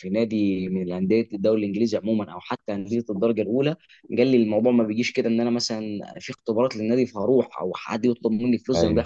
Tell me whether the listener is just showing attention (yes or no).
yes